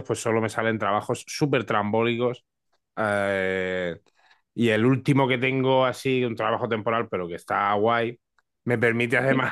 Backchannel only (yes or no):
yes